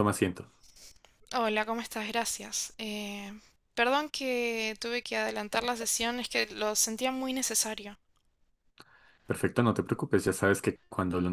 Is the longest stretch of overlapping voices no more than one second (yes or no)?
yes